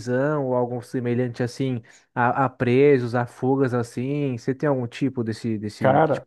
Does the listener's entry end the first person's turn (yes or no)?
yes